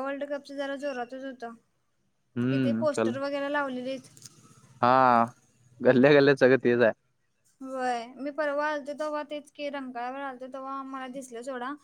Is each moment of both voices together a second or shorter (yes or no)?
yes